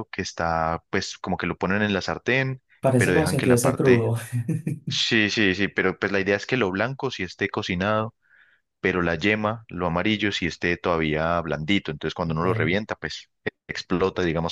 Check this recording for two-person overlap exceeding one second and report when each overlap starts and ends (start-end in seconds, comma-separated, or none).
2.8-4.1